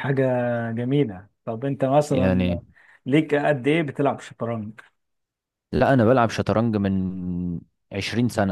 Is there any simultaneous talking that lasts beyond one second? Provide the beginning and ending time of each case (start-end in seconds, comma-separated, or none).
none